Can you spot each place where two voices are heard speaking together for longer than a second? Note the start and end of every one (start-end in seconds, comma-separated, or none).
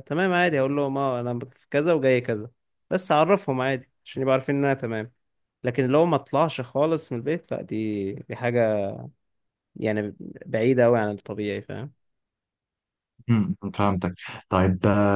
none